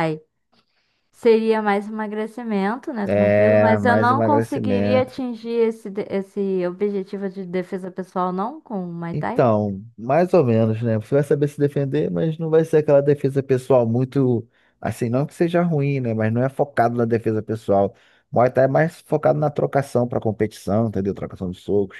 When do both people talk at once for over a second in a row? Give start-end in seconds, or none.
3.0-5.1